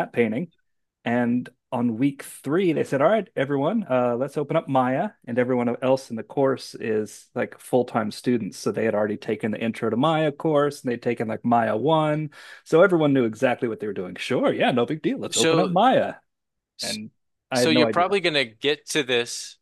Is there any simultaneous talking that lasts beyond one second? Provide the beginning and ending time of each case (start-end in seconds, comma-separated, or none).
none